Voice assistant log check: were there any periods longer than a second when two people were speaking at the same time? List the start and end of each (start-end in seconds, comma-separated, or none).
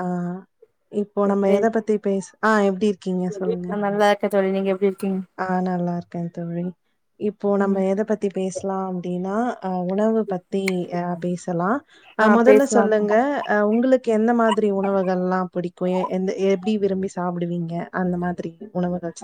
none